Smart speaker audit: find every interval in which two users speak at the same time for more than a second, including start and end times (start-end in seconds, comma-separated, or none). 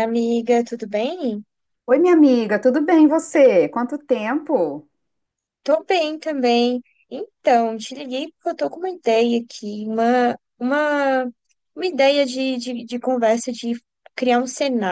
none